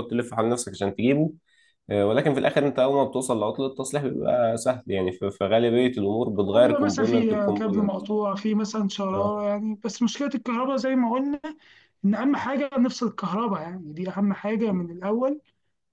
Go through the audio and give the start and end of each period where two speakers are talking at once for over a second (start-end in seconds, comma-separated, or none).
6.4-7.9